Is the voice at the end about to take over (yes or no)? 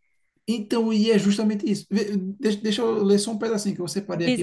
yes